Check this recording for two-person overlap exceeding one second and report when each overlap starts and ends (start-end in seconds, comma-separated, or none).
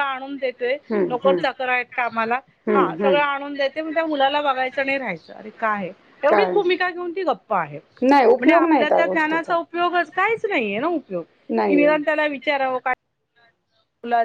8.0-9.5